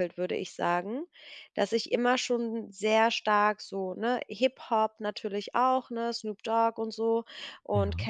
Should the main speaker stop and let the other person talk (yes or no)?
no